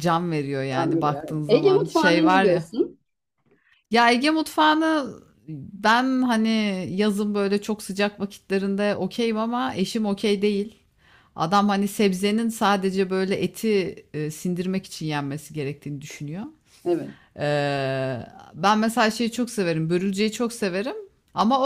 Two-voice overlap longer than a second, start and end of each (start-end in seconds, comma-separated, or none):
0.8-2.7